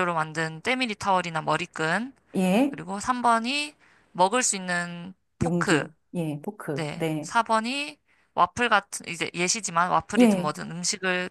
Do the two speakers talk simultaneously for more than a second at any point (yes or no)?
no